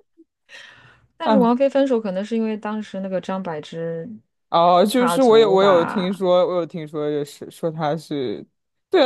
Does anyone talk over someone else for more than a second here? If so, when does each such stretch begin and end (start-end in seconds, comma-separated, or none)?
4.9-6.2